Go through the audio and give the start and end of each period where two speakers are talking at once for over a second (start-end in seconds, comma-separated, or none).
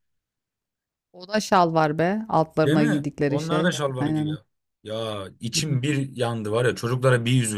2.6-4.4